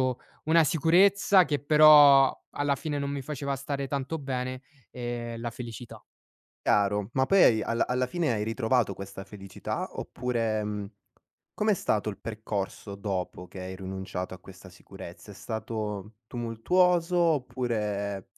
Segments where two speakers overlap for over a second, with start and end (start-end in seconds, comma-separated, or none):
none